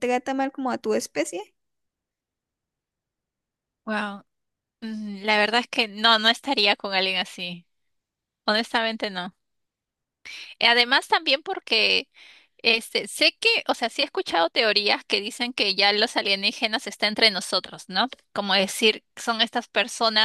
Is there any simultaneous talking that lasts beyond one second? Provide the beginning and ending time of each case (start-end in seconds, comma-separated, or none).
none